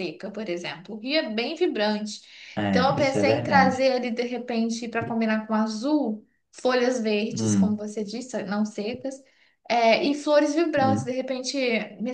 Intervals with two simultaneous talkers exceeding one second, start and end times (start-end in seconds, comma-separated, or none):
2.7-4.0